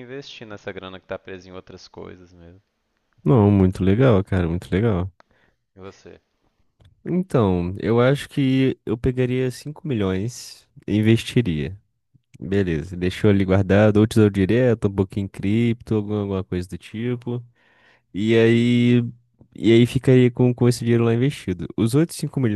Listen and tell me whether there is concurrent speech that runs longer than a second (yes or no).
no